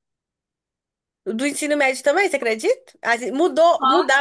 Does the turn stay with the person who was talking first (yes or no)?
yes